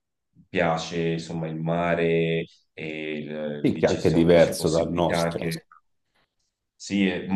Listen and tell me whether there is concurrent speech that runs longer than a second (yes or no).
yes